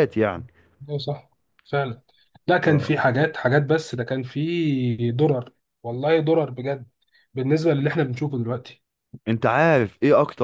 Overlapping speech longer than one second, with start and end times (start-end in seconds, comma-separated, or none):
none